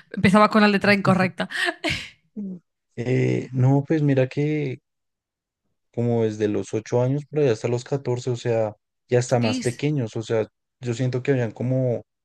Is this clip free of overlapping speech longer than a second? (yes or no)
yes